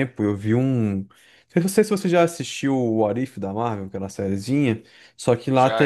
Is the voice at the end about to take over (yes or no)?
no